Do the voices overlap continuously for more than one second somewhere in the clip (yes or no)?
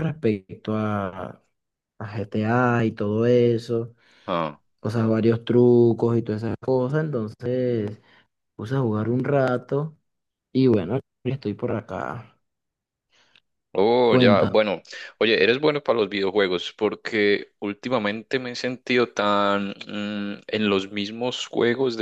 no